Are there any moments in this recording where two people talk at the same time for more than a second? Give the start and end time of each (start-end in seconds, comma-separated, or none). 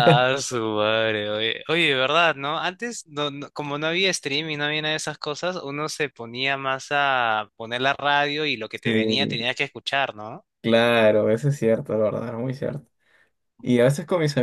none